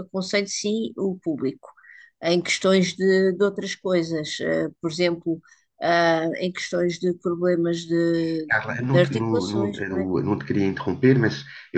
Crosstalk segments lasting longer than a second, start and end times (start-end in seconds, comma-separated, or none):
8.5-9.8